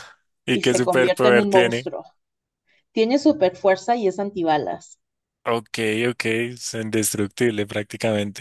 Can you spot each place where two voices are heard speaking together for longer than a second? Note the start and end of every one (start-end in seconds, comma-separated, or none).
0.5-1.9